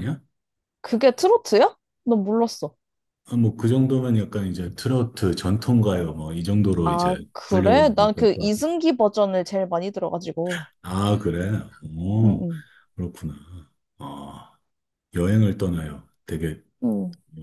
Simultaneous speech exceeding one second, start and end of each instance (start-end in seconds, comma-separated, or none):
6.8-8.5